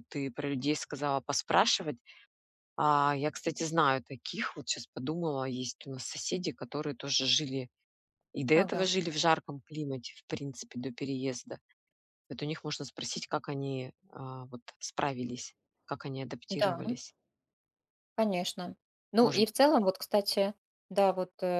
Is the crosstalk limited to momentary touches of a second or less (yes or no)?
yes